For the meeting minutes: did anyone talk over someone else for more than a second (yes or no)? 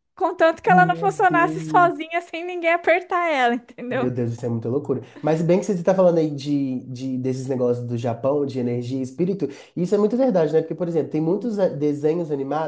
yes